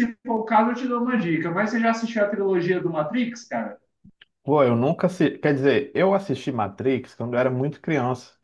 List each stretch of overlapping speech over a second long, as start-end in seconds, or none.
none